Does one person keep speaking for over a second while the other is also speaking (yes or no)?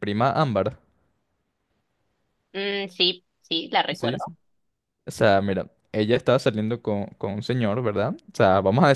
no